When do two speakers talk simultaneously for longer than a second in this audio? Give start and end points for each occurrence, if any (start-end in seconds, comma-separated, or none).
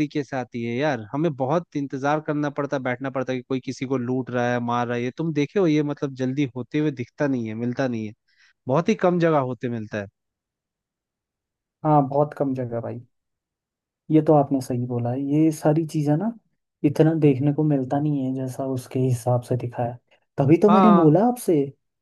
none